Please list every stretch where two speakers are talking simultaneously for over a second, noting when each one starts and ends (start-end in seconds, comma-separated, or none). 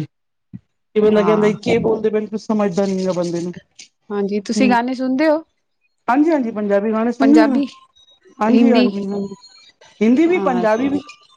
none